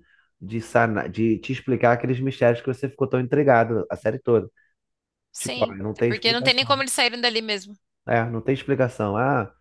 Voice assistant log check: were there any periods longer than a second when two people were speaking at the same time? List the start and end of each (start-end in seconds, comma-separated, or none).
5.4-6.8